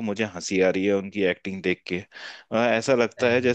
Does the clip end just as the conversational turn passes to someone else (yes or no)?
no